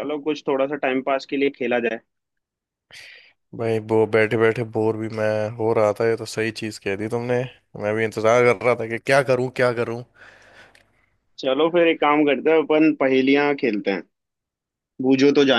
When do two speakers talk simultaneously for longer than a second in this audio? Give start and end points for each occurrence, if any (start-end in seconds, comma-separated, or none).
none